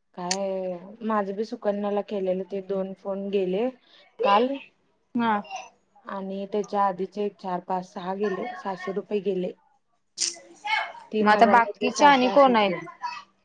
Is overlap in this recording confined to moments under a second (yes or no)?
no